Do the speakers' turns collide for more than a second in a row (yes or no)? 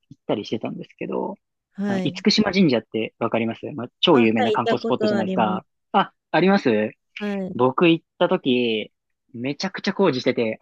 yes